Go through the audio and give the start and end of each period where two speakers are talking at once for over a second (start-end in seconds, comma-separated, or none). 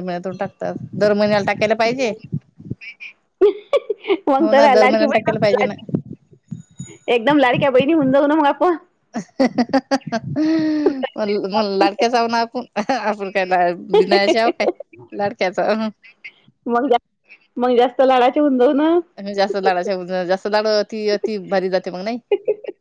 4.4-5.7